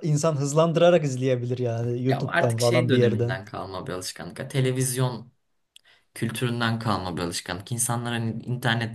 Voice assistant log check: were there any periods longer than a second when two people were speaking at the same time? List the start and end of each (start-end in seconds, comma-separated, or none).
2.0-3.4